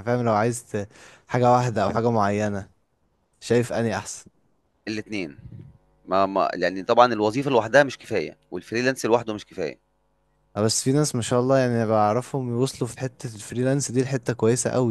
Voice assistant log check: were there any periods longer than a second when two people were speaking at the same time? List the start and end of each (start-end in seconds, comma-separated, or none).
none